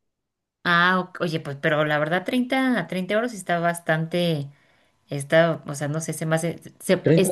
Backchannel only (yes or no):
no